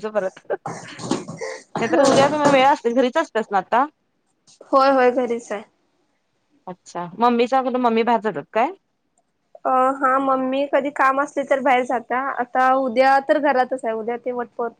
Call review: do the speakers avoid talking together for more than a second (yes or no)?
yes